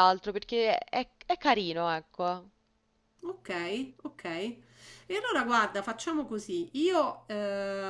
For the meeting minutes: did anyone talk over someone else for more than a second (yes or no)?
no